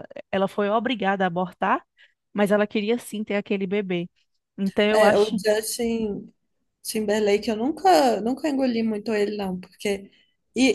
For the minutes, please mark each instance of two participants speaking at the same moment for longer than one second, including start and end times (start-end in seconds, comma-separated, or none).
none